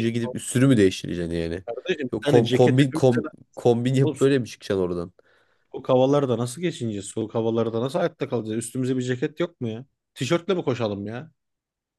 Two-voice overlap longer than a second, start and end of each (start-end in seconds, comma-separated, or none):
2.1-3.4